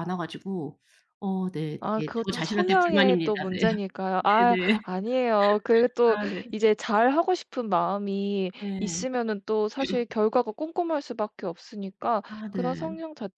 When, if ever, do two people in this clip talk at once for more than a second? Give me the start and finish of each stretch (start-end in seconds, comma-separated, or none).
1.8-3.6